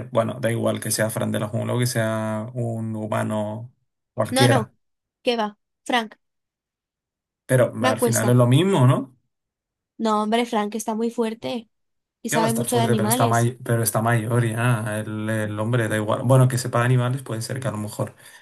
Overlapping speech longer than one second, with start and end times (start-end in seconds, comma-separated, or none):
12.3-13.5